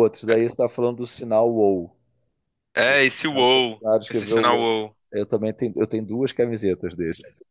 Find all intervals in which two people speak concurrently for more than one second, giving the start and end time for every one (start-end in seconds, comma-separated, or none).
2.8-4.7